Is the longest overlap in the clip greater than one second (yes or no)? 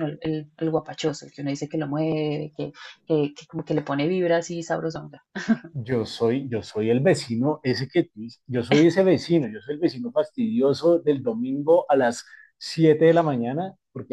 no